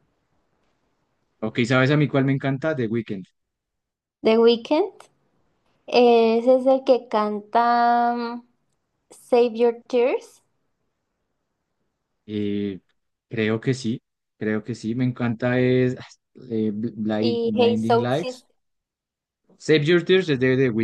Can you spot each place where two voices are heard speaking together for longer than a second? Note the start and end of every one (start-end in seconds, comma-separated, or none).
17.2-18.5